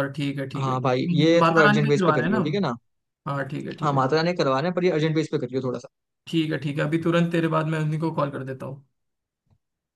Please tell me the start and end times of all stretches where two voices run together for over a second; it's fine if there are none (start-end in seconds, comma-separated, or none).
0.6-2.6